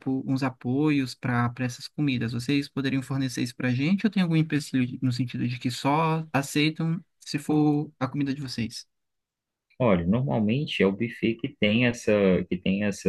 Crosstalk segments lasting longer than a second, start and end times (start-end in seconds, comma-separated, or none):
none